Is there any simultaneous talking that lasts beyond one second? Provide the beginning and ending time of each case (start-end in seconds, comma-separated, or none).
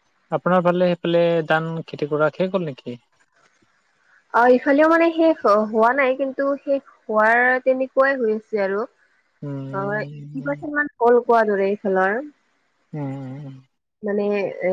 9.4-10.7